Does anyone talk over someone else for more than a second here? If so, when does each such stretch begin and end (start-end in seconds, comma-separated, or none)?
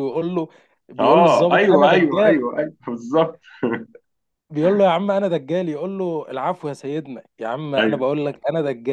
1.0-2.4